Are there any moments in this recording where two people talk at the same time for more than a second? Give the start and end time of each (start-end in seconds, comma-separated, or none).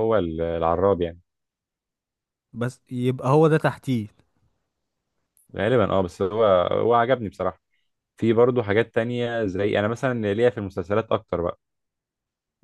none